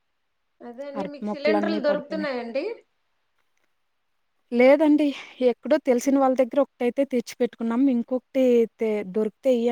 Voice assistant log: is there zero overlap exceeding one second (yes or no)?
no